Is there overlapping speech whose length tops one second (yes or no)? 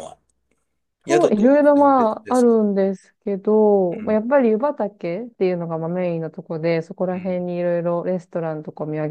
yes